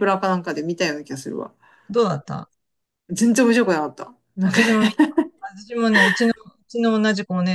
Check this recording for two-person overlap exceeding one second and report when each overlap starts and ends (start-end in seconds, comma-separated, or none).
none